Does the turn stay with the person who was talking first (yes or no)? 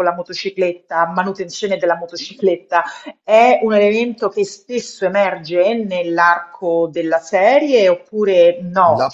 no